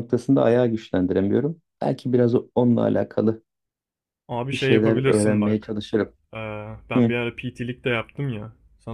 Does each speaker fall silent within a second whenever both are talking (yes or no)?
no